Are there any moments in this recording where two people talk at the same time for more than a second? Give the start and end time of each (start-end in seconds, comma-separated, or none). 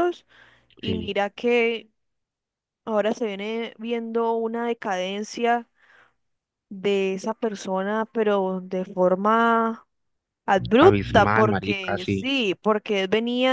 10.9-12.3